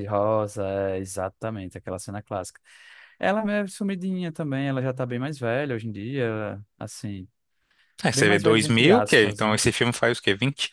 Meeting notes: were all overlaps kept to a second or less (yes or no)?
no